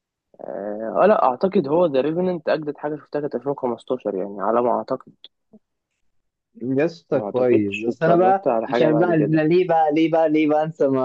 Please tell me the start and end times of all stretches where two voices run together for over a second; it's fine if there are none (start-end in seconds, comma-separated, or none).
7.1-9.4